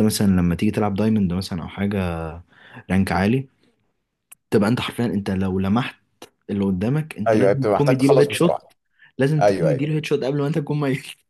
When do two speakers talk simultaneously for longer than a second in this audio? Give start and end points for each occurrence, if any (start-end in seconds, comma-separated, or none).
7.3-8.7